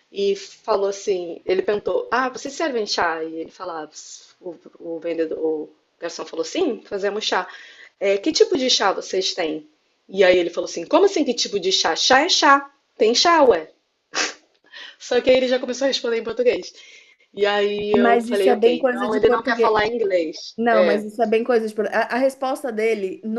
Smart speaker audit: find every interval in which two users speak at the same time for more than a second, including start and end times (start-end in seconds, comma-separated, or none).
17.9-19.8